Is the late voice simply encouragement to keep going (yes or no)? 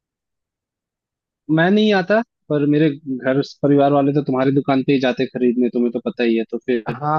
yes